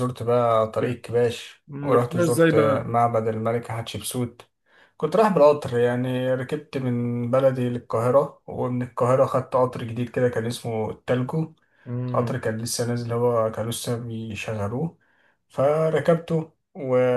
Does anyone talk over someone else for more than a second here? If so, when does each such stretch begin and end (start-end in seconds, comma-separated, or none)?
1.7-2.9